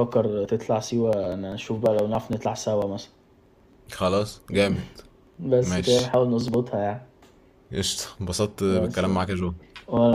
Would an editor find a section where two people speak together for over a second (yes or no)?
no